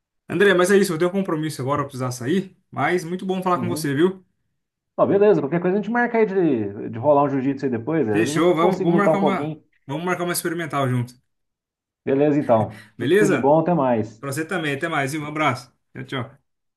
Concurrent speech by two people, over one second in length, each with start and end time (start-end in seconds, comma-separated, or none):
8.1-9.6